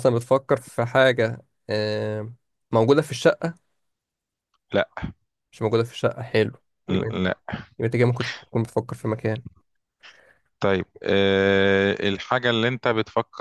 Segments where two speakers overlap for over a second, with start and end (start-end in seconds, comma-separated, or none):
none